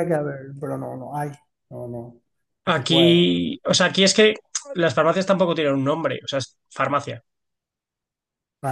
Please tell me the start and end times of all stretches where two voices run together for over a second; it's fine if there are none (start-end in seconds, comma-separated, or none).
none